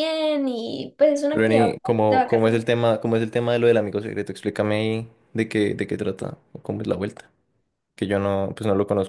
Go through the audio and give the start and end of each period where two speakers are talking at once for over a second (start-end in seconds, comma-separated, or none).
1.3-2.5